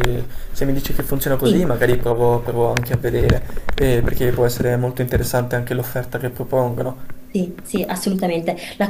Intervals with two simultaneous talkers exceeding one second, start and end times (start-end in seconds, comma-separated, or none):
none